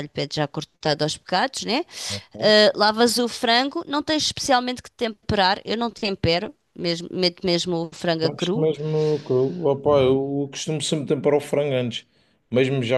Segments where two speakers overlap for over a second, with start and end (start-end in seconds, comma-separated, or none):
none